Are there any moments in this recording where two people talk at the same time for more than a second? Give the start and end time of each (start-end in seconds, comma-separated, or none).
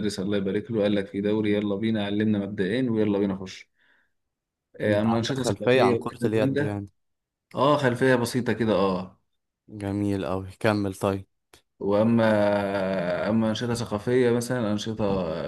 4.9-6.8